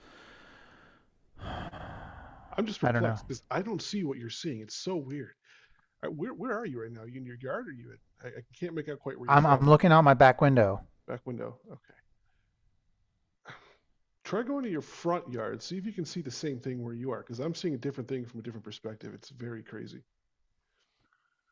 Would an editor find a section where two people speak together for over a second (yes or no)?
no